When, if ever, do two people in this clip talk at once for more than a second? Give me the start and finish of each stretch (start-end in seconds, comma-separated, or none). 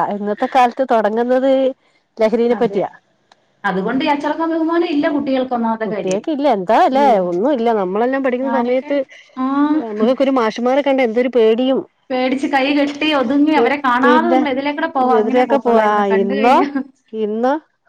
15.2-16.6